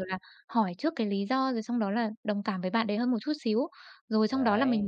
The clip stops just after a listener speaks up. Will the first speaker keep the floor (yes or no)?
yes